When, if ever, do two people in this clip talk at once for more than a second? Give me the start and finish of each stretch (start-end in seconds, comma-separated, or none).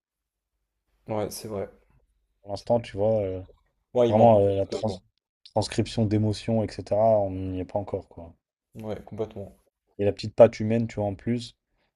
none